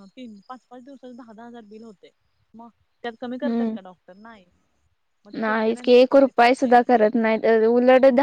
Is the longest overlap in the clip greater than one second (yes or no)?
yes